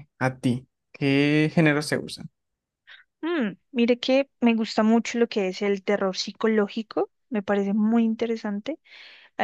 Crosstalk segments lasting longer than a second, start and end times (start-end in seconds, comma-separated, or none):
none